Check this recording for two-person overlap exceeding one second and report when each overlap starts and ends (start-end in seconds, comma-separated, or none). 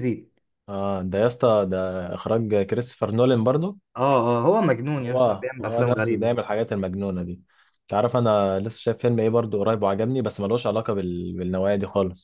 5.0-6.3